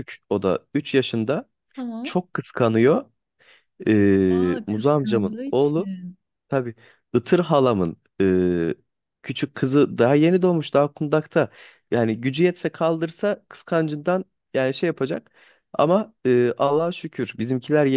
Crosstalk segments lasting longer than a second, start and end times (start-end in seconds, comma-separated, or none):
4.7-5.9